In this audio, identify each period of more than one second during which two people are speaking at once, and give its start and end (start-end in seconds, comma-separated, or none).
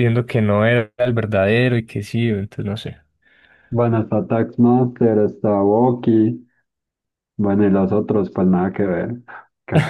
none